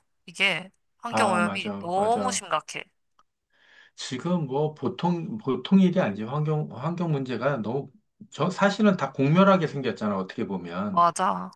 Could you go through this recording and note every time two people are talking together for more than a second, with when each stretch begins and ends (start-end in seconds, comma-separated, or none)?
1.1-2.5